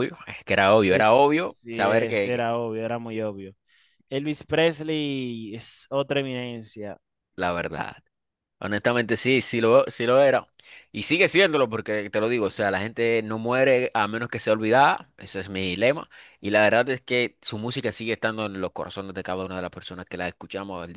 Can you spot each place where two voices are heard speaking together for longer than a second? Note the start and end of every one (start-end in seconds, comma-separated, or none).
0.9-2.5